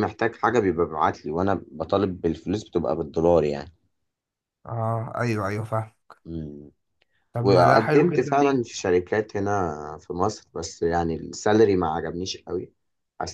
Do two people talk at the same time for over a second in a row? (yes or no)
yes